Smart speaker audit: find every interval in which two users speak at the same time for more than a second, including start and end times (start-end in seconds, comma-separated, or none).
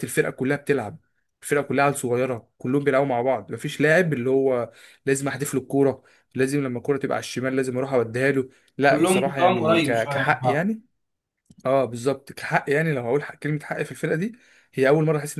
8.9-10.7